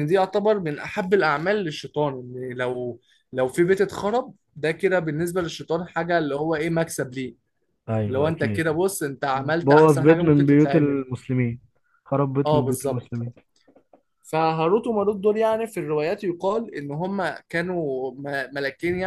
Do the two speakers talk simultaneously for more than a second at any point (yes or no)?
yes